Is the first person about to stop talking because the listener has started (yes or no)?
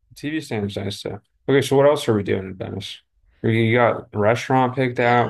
yes